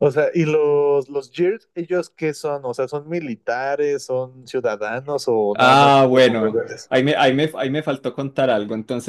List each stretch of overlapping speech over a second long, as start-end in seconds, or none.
5.5-6.9